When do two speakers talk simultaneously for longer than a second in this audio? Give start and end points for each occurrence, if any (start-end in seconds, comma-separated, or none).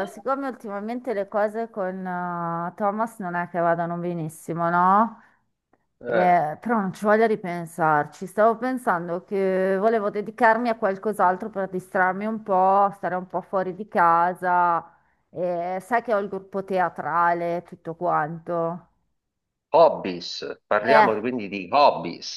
none